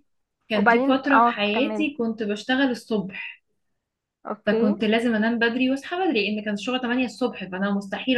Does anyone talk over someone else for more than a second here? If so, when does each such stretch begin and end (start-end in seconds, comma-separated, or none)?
0.5-1.9